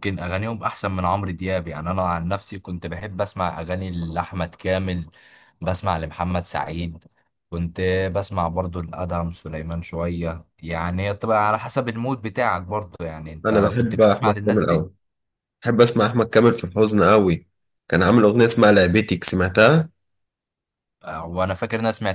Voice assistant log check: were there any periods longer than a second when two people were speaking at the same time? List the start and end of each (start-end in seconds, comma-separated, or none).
13.5-14.9